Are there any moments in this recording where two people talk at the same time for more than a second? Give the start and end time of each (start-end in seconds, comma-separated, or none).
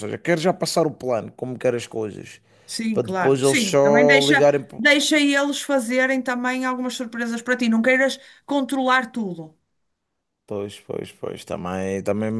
2.9-4.9